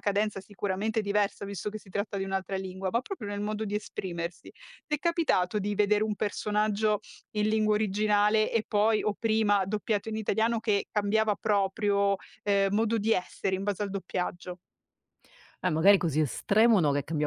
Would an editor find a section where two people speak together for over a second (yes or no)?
no